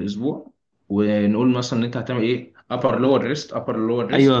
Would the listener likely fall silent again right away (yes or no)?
no